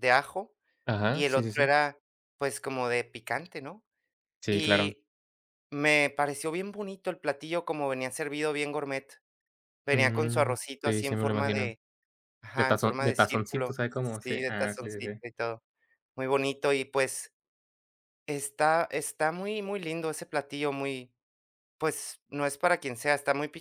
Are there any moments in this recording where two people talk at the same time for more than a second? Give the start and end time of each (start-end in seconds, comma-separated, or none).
9.9-11.7, 12.6-15.2